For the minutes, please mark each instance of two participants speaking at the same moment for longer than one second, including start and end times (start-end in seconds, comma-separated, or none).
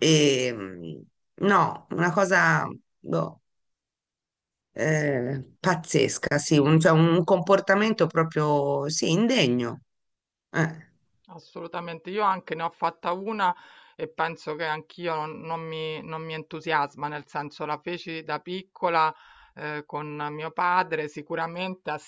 none